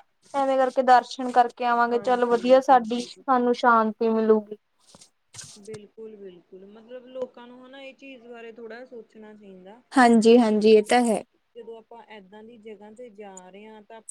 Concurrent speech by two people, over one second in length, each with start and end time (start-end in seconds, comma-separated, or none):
1.9-3.1